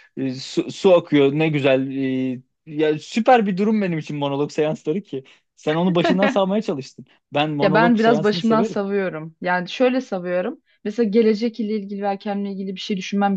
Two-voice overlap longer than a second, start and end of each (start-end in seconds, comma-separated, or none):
7.6-8.8